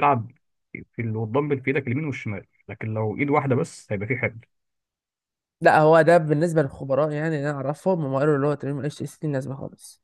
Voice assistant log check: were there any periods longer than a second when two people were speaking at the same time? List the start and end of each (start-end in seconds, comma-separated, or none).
none